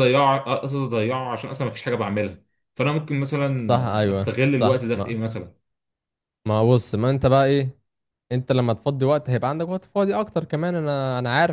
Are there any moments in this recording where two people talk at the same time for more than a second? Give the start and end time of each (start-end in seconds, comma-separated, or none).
3.7-5.2